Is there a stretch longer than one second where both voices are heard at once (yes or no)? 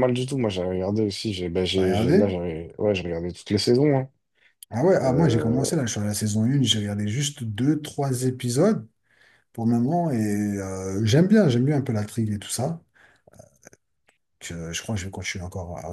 no